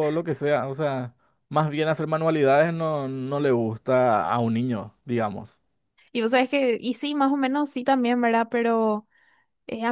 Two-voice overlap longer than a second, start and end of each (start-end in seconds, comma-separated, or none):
none